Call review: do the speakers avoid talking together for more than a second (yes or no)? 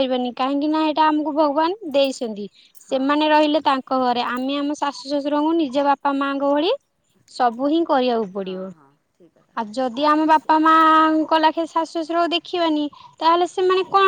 yes